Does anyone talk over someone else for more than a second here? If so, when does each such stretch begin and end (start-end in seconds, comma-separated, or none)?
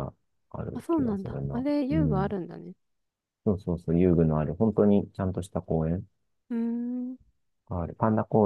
0.7-2.4